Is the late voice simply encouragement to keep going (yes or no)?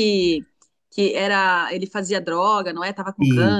no